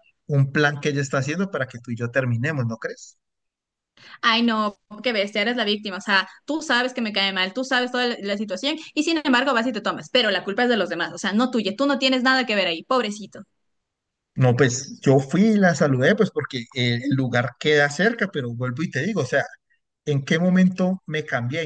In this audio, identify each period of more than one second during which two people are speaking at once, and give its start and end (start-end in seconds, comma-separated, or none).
none